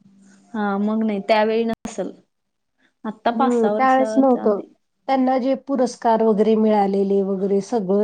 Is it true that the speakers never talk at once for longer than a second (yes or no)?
no